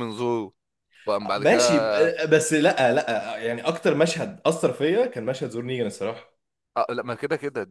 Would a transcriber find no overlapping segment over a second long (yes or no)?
yes